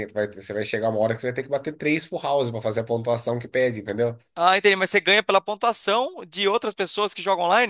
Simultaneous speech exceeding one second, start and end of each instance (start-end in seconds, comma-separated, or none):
none